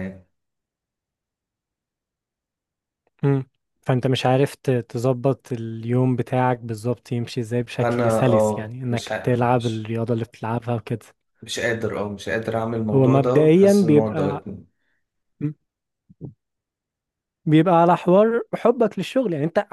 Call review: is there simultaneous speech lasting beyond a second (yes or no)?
yes